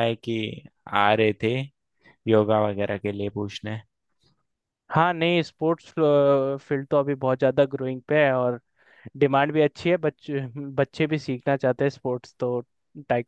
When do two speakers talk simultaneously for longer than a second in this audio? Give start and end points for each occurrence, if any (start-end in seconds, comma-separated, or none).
none